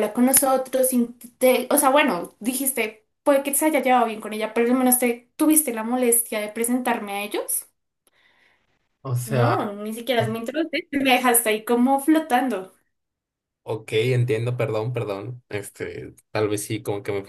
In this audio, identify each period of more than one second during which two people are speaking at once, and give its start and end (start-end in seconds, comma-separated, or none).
none